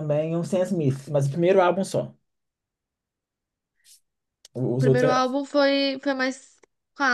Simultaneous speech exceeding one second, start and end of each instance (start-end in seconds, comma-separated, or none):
none